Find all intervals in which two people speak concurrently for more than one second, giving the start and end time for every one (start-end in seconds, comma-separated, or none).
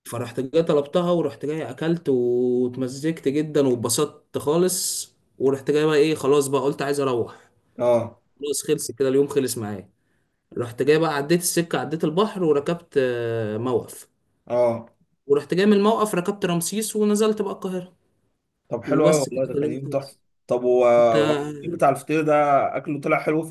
18.9-20.2